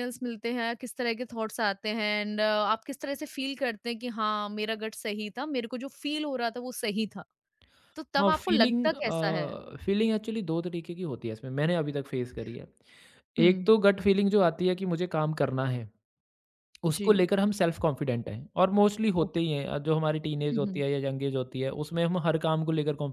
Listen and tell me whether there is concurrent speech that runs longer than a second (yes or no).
yes